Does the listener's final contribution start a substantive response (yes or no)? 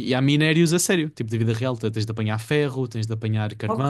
no